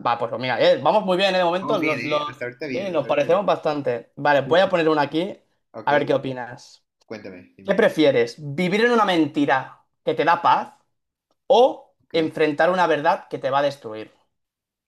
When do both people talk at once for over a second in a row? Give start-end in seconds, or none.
1.6-3.4